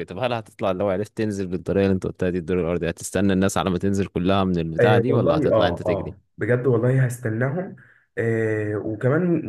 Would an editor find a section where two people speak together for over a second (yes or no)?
yes